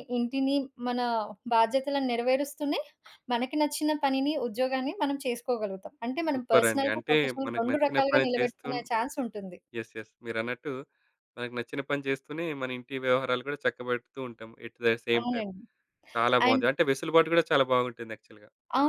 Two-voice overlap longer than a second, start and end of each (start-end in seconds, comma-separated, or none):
6.3-8.8